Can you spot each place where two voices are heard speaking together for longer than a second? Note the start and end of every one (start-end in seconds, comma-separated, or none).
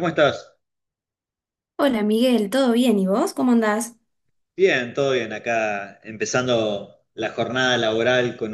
none